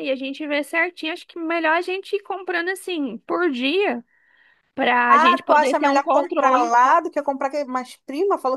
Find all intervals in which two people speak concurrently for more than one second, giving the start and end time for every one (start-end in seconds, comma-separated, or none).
5.1-6.7